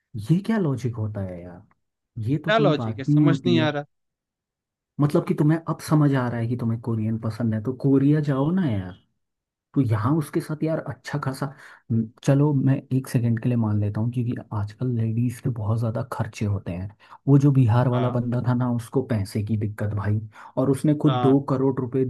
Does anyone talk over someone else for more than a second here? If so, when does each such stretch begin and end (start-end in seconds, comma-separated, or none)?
2.5-3.8